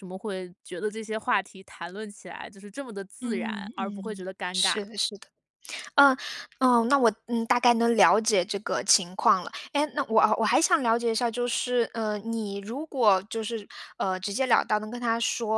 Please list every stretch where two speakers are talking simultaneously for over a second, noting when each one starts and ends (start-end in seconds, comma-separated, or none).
3.2-4.8